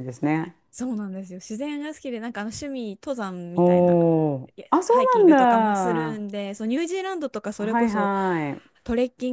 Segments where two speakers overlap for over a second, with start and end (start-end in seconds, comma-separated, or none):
4.6-6.2